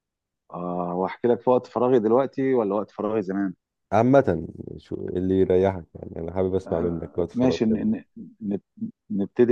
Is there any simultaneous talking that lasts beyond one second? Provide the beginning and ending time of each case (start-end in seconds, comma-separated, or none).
6.7-8.0